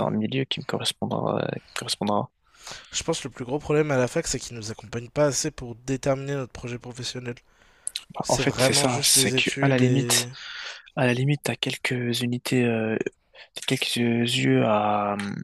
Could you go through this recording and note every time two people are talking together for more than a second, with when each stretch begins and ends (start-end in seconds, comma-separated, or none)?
8.2-10.3